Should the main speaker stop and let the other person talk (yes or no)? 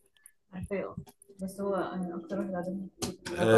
yes